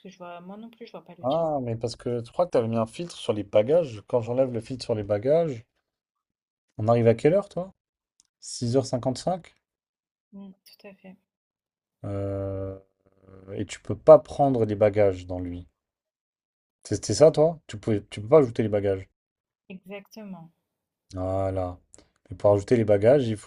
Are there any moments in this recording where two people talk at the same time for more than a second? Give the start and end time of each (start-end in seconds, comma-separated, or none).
none